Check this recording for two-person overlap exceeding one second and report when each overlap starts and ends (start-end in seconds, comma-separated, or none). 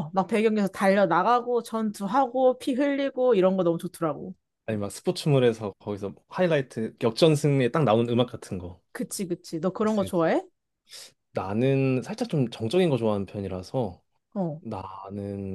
none